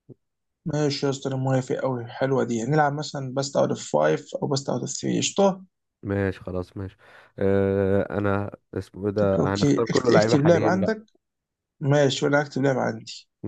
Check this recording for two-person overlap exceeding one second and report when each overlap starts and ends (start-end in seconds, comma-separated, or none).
9.2-10.9